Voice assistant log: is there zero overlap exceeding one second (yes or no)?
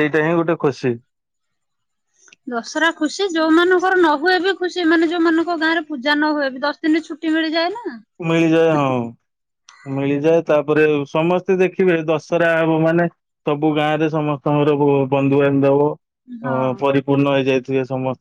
yes